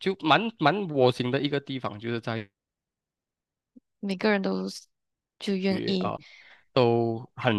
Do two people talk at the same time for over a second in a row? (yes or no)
no